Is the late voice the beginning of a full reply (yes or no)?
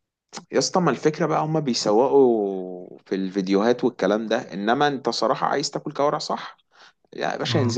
no